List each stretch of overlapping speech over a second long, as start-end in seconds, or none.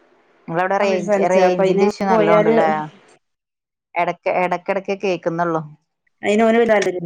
0.8-2.5